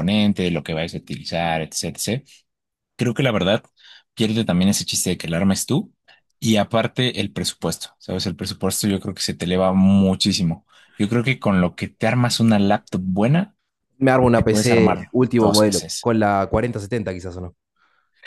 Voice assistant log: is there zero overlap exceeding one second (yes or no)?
no